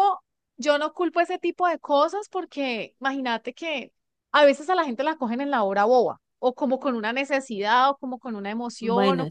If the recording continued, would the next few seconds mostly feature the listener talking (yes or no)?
no